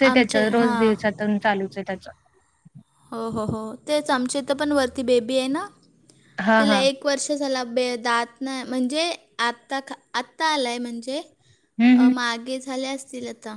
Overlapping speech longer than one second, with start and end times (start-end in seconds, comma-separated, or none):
none